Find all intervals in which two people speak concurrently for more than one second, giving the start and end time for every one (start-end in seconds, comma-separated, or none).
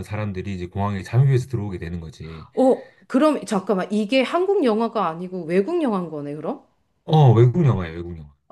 none